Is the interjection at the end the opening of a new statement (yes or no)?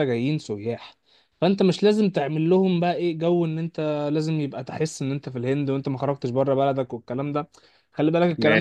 no